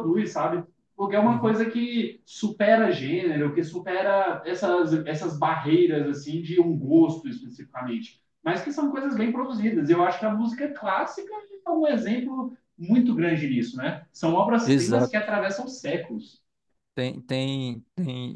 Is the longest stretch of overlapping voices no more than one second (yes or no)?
yes